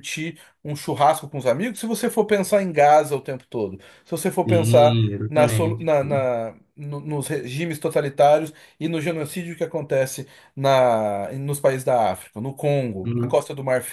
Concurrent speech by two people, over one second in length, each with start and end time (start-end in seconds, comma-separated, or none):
4.4-5.9